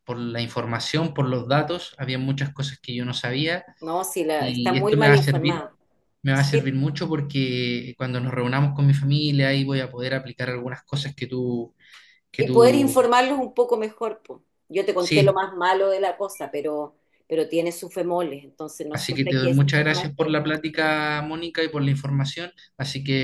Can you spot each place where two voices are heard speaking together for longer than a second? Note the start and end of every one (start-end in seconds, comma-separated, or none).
4.3-5.6, 18.9-20.4